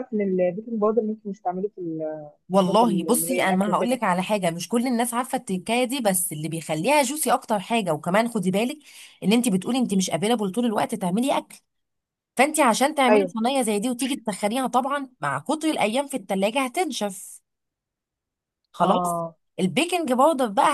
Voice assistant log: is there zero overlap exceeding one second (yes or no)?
no